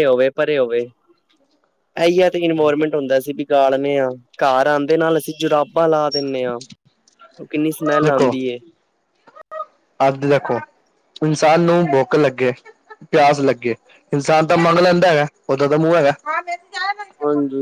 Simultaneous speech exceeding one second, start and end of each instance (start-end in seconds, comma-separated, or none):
none